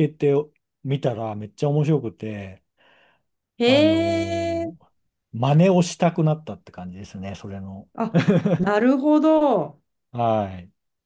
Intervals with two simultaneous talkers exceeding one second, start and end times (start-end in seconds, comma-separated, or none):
none